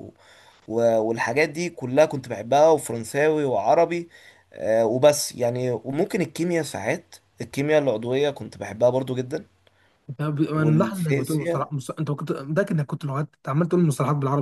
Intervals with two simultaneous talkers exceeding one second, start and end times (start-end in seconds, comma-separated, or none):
10.5-11.7